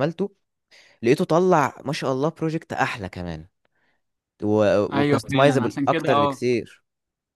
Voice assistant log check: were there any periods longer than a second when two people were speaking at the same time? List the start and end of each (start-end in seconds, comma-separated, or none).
4.9-6.4